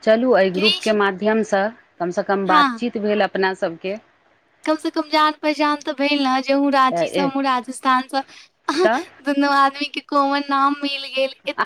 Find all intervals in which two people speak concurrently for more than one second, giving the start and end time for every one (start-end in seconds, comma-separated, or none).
none